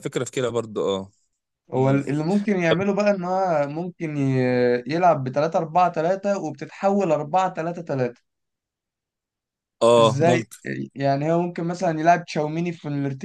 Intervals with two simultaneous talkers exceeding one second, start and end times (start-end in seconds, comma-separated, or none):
none